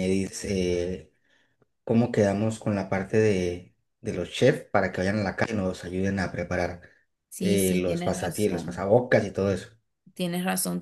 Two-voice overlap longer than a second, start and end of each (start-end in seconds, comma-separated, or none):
7.4-8.8